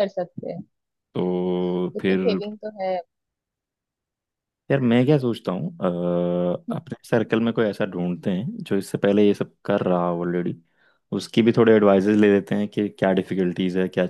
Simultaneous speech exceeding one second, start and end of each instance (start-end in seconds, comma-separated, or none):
none